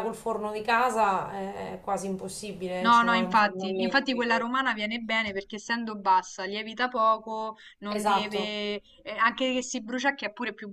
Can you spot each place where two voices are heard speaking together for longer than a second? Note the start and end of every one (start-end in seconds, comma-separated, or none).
2.8-4.5